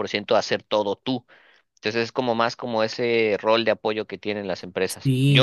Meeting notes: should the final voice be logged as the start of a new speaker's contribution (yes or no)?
yes